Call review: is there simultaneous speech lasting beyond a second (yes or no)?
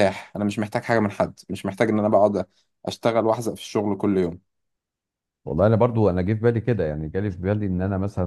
no